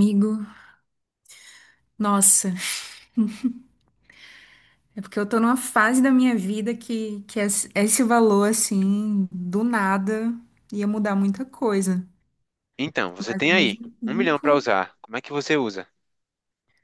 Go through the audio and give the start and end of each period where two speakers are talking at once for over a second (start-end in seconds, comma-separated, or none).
13.2-14.7